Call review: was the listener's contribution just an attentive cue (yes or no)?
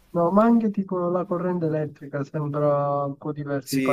no